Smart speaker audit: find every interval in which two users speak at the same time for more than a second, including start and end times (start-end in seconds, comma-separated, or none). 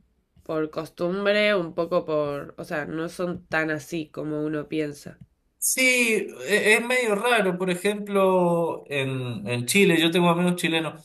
none